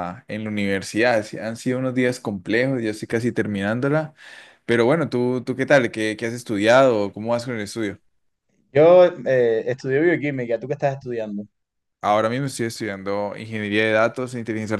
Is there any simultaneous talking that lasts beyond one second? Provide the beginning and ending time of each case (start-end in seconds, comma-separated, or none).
none